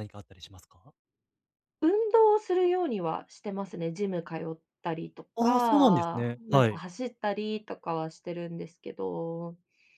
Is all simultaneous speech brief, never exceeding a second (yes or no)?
no